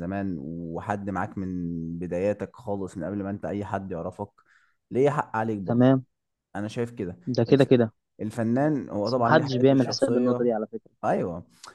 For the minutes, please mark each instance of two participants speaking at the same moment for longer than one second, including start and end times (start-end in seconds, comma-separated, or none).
9.0-10.5